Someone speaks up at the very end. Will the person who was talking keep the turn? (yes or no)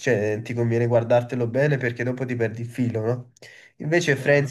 yes